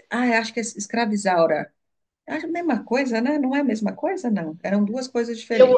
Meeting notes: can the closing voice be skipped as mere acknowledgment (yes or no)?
no